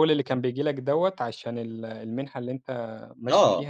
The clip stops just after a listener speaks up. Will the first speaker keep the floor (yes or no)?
no